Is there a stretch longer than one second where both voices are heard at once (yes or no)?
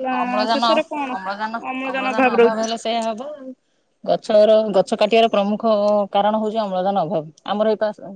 no